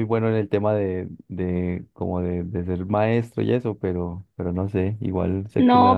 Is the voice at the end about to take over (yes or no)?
yes